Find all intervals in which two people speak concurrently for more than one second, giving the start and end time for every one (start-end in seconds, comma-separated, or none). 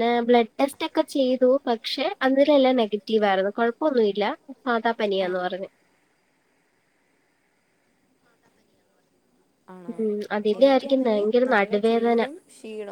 10.6-12.2